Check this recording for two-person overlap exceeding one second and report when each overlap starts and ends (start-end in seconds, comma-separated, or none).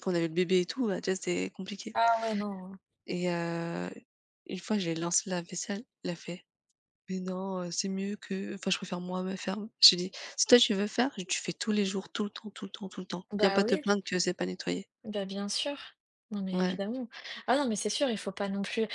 none